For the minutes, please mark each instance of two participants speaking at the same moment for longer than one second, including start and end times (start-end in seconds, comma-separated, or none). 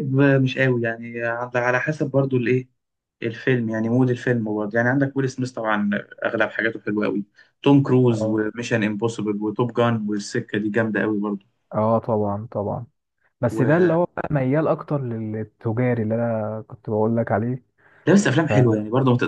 none